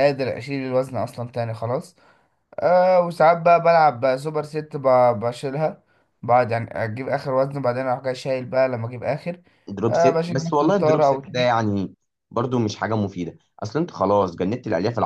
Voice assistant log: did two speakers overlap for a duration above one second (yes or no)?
yes